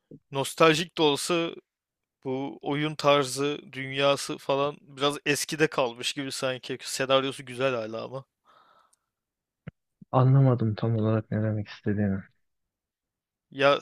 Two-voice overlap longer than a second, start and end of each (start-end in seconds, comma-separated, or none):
none